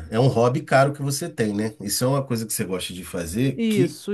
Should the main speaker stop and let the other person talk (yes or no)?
yes